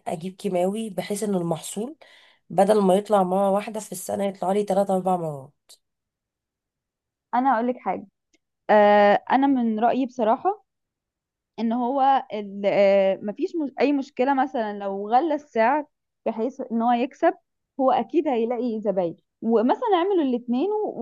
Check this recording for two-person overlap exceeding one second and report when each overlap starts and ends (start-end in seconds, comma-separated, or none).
none